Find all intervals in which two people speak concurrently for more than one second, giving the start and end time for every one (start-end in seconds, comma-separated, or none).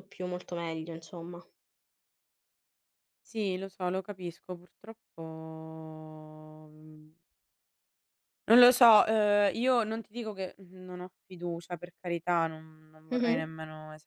none